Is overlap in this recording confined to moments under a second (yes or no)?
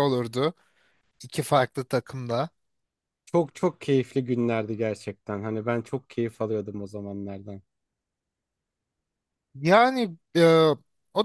yes